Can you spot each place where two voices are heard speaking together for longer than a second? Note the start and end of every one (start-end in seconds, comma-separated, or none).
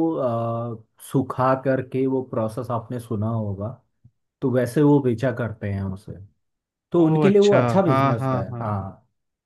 7.0-8.7